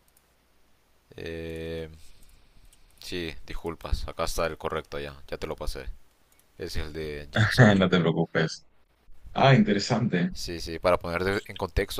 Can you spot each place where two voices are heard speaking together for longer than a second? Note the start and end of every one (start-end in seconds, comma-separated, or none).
none